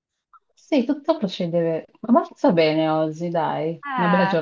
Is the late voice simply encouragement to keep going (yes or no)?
no